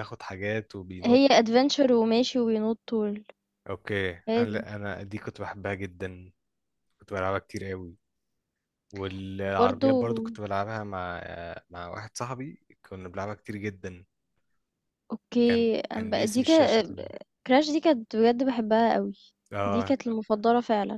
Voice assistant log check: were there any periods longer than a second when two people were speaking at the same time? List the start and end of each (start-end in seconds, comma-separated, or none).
15.4-16.8